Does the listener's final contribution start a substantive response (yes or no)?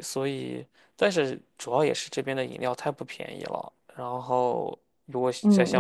yes